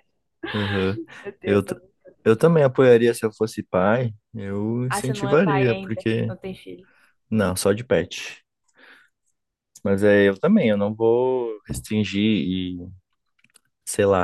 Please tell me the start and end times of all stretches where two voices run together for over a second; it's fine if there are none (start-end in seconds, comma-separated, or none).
4.9-6.3